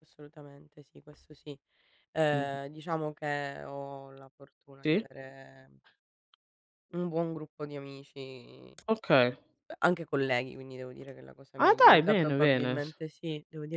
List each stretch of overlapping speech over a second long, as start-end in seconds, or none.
11.6-12.8